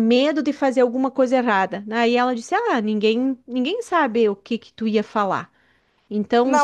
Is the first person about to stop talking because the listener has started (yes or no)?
yes